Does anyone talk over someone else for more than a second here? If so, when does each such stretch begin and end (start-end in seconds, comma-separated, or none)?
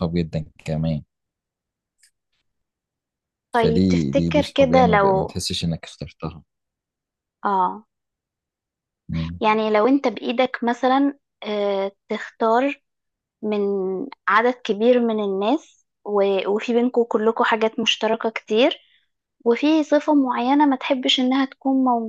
3.6-5.3